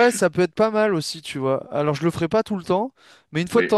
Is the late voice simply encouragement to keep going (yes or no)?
yes